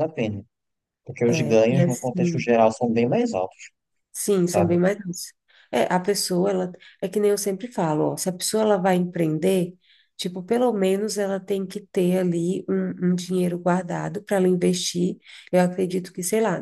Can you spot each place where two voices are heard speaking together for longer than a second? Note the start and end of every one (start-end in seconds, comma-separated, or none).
1.3-2.5